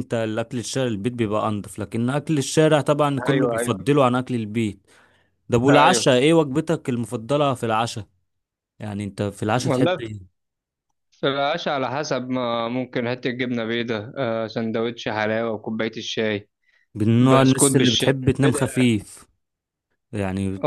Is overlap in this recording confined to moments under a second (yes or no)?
no